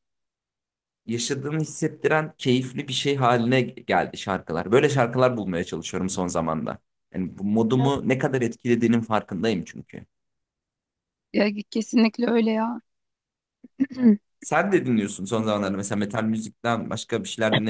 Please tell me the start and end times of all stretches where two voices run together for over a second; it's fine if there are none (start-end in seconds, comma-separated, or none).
none